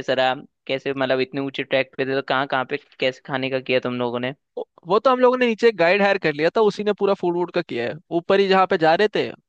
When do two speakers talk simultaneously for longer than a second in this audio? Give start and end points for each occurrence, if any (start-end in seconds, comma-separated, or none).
none